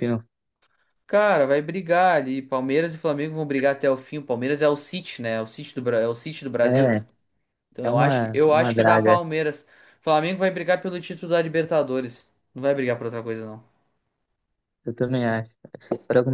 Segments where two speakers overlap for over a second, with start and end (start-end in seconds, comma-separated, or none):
7.8-9.2